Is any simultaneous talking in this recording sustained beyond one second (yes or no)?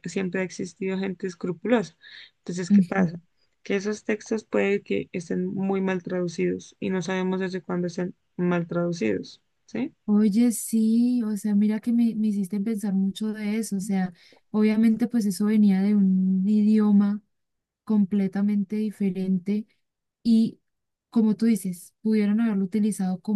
no